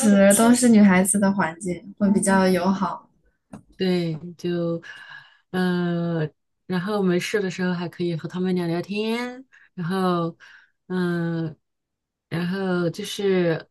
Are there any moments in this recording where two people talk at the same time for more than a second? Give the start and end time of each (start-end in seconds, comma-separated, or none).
none